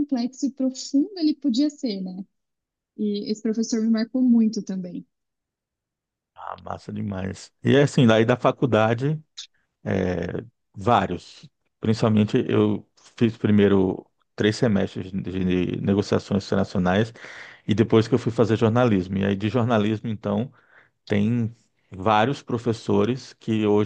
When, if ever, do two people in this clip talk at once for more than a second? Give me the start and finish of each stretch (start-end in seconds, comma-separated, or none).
none